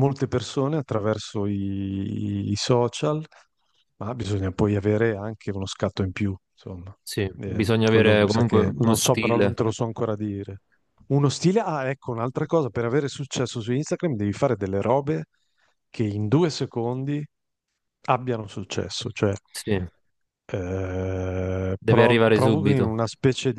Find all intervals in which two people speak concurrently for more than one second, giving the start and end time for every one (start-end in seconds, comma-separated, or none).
7.4-9.6, 21.8-23.0